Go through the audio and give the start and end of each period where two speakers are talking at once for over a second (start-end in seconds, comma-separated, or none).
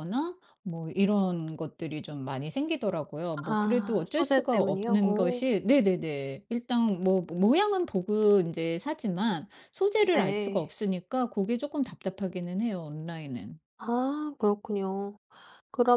3.4-5.4